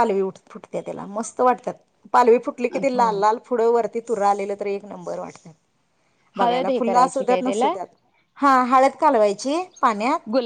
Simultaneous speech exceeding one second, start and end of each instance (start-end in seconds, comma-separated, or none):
6.4-7.7